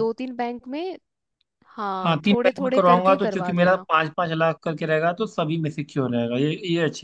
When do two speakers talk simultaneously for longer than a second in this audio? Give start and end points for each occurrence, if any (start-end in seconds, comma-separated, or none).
2.0-3.8